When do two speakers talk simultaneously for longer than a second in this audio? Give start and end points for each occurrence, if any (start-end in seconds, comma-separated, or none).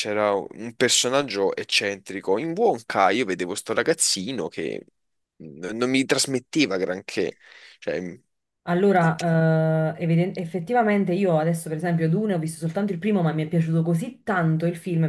none